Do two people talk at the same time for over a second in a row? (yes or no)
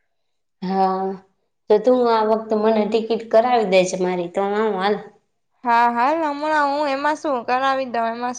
no